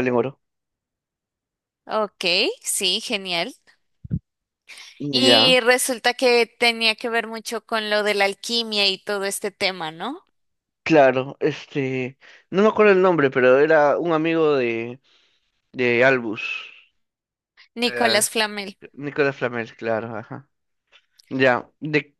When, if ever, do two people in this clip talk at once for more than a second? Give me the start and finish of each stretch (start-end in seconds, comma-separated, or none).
none